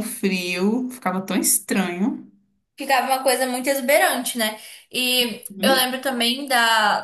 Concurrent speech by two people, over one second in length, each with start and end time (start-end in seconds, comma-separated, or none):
none